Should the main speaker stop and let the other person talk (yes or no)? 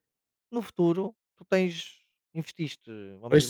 no